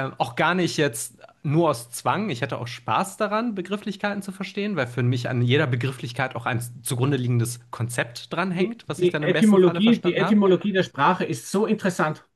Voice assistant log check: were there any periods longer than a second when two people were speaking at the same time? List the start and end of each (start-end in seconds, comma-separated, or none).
8.5-10.4